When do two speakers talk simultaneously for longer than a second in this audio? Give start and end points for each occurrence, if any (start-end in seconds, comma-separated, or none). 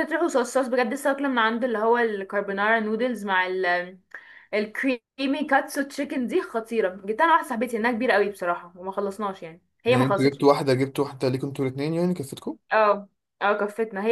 none